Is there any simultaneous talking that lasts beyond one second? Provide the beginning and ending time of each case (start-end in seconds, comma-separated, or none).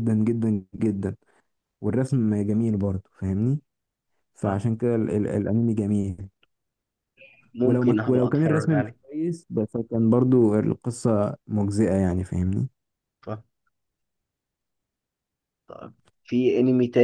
7.6-9.0